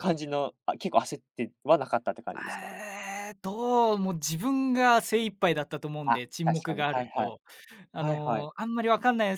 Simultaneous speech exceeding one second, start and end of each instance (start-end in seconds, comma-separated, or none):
6.0-7.3